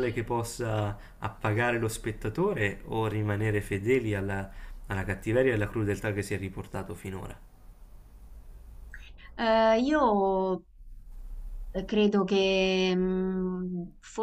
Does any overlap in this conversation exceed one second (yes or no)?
no